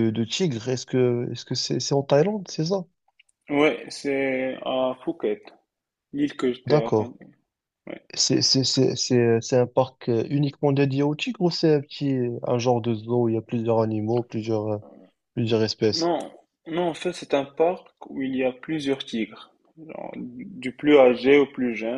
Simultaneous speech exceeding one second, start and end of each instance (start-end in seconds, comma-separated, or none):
none